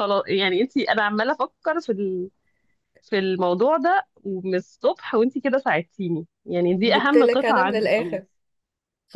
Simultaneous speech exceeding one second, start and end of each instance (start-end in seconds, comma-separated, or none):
6.8-8.2